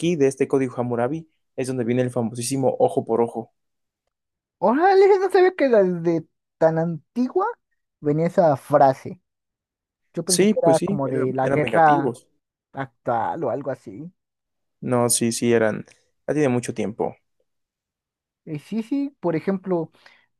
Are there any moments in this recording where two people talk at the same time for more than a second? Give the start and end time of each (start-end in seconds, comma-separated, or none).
10.2-12.2